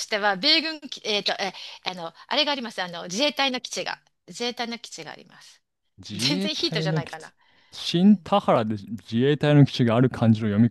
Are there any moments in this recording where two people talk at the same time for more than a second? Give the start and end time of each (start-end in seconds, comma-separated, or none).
6.1-7.3